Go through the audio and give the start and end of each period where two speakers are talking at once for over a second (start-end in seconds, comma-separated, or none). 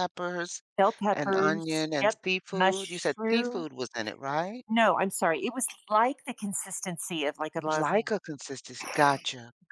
1.1-3.7